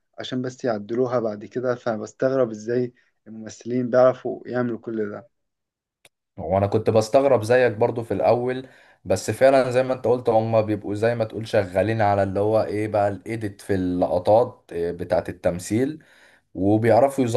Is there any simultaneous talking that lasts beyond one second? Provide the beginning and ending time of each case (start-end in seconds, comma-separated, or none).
none